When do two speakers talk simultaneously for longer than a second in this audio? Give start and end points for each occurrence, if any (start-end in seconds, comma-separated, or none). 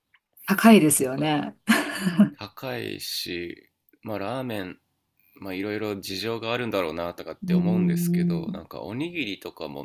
7.4-8.6